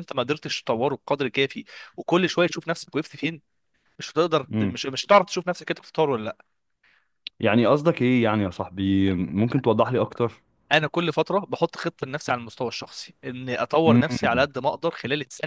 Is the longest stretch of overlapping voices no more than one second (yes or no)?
yes